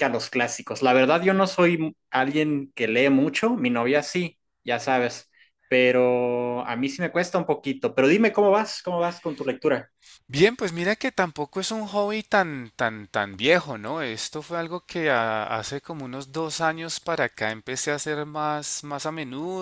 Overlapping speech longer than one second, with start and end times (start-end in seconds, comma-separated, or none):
none